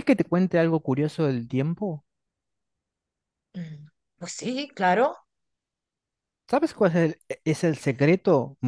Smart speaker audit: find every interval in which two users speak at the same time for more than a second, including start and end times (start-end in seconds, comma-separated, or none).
none